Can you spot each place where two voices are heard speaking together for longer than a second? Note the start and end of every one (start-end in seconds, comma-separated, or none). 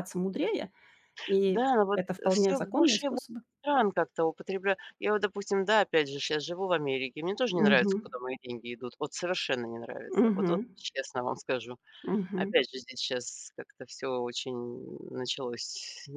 1.4-3.2